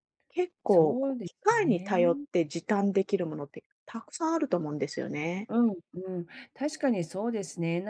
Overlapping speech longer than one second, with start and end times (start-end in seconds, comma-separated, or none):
0.7-2.3